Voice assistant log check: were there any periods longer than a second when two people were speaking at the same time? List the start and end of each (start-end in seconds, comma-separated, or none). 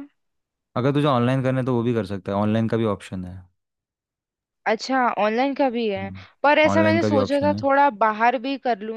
6.0-7.6